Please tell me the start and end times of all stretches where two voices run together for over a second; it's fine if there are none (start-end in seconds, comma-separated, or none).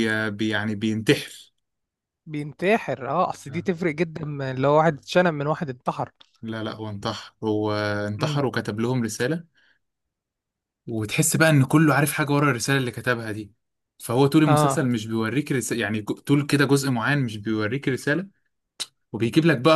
none